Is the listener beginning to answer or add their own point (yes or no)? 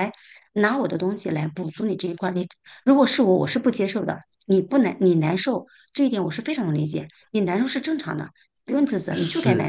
yes